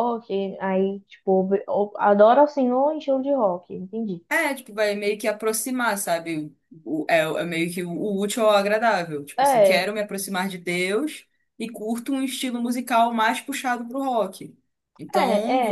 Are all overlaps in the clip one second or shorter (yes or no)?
yes